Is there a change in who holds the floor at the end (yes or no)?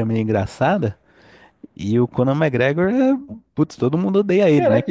yes